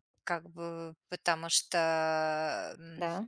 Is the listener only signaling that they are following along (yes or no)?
yes